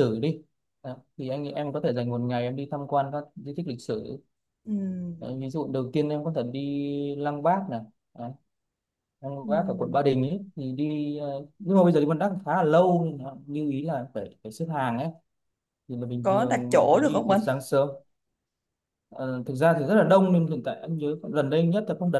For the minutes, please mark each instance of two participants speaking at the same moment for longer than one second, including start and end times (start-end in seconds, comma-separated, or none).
16.2-17.4